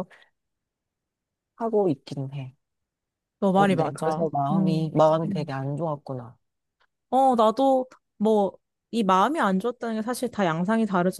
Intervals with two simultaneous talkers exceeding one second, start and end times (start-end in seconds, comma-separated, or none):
3.5-5.5